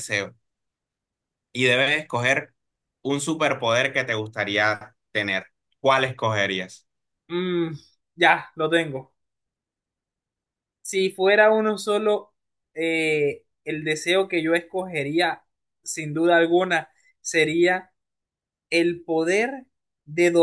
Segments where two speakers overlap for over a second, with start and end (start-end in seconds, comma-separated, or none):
none